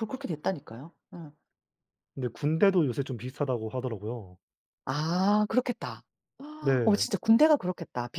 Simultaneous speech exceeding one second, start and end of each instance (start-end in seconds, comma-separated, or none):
none